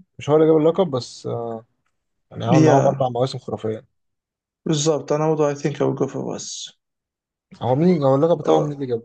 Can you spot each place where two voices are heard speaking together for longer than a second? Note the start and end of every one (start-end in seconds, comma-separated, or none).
none